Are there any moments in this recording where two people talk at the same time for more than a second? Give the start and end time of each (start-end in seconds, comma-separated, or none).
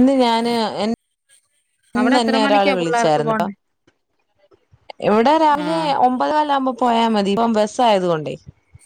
2.0-3.5